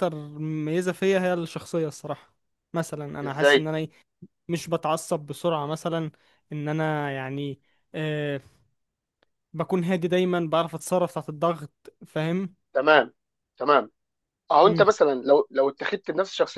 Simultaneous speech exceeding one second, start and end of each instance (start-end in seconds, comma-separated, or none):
none